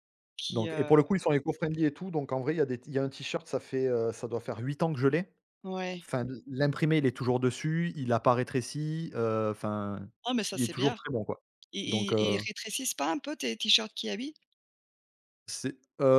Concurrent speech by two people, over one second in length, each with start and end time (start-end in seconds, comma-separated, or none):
none